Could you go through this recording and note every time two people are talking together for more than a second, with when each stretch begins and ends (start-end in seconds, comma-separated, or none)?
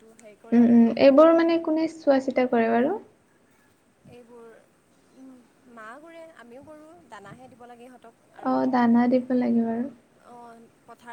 none